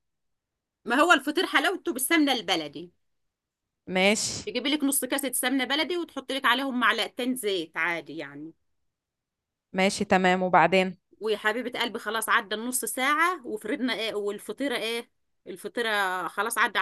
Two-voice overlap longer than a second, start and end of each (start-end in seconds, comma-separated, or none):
none